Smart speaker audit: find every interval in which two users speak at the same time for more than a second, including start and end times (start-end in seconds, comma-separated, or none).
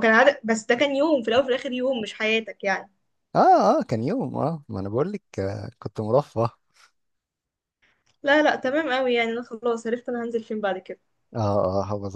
none